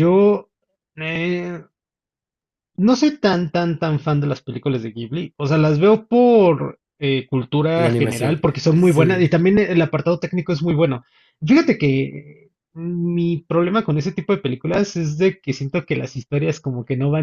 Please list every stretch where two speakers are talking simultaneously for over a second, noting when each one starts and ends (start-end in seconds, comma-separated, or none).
7.8-9.3